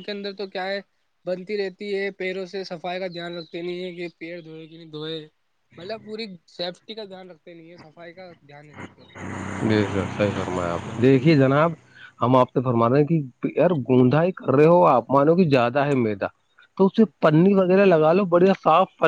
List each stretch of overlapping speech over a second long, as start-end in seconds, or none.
none